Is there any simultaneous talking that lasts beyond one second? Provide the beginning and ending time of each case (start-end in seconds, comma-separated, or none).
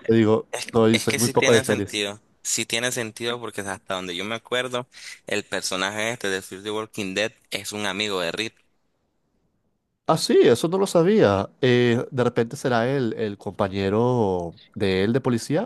0.5-2.0